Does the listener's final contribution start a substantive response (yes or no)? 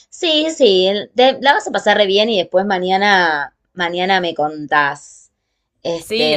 yes